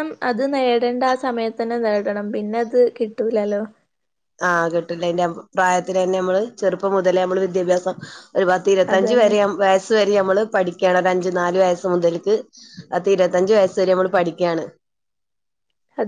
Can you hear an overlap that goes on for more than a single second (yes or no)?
no